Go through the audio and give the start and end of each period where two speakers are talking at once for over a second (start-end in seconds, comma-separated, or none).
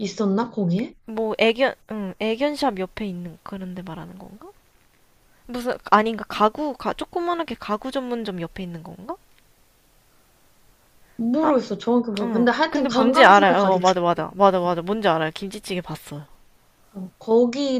12.2-13.8